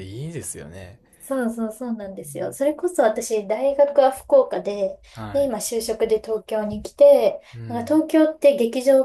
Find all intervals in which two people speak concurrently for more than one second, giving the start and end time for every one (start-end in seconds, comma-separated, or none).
none